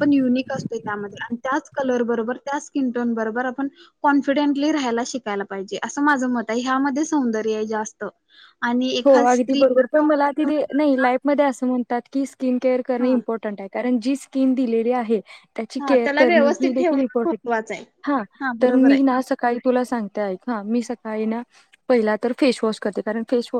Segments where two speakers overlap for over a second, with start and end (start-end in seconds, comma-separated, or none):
15.8-17.4